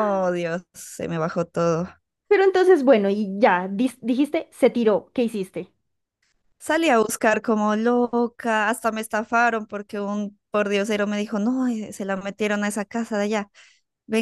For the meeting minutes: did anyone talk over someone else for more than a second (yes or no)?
no